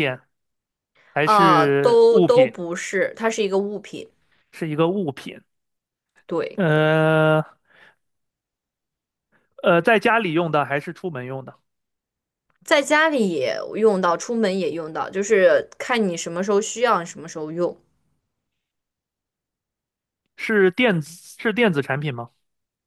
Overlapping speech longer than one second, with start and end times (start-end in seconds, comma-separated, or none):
1.2-2.6